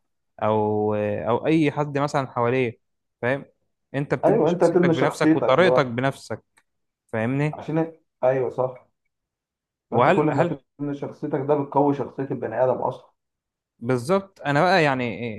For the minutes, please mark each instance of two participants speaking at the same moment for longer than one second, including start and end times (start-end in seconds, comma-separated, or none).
4.2-5.8